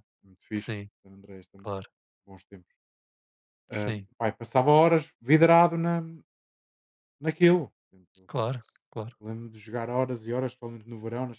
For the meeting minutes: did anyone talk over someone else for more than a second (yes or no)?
no